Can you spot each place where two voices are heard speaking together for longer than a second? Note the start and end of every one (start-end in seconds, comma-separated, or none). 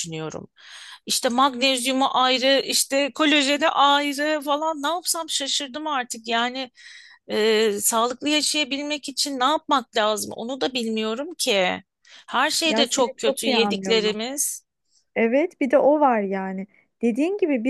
12.6-14.2